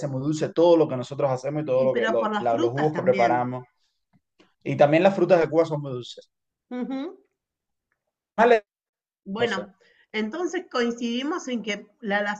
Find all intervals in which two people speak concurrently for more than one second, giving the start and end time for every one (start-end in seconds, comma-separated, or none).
1.7-3.5